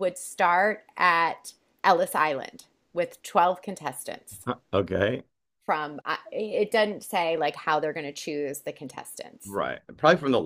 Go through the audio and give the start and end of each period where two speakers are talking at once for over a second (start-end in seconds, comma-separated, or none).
none